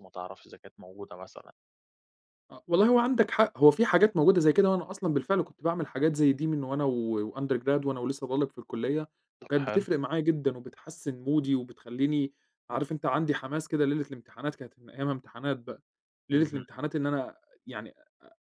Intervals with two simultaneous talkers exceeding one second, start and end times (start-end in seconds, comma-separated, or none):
none